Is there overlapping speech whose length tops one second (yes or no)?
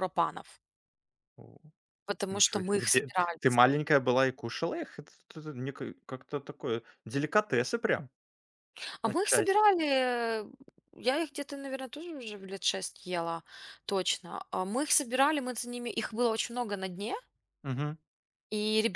yes